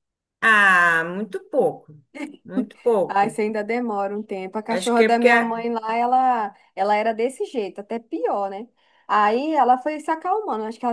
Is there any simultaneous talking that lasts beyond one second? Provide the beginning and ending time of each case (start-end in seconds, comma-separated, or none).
none